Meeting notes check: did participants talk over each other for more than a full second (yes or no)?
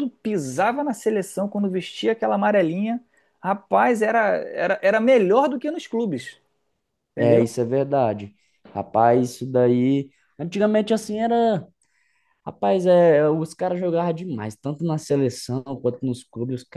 no